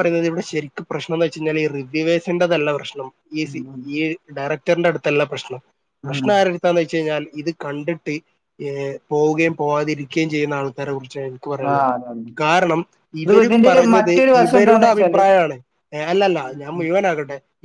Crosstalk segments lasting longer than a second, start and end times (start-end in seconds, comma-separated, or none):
13.3-15.2